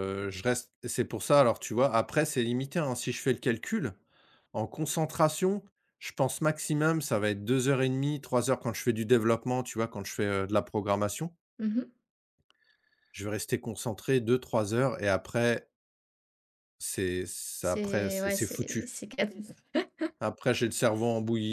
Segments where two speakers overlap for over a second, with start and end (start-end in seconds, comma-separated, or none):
17.6-18.9